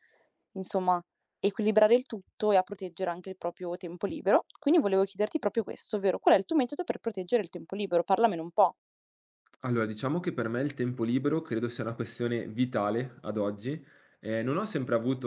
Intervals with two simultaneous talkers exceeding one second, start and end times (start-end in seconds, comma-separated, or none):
none